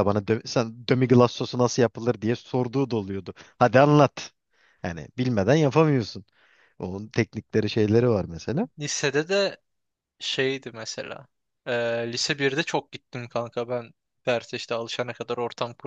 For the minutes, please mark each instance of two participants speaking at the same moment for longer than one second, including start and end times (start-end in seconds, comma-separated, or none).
none